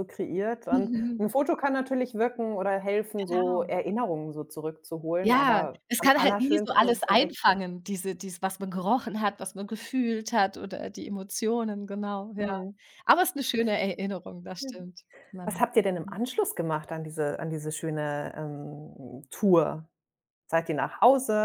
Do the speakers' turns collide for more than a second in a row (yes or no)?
yes